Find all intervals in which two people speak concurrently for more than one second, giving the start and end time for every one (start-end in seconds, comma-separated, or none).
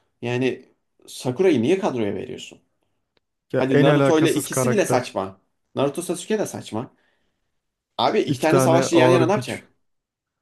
3.5-5.1, 8.3-9.6